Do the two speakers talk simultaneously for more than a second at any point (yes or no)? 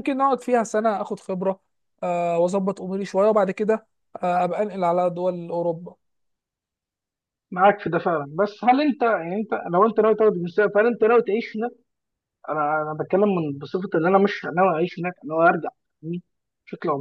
no